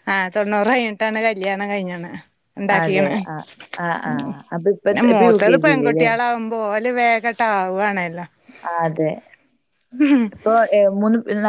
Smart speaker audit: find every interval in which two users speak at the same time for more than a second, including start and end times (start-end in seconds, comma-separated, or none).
4.1-6.1